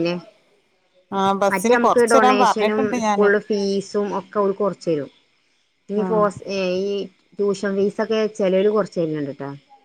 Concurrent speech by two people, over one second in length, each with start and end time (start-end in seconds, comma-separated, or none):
1.5-3.3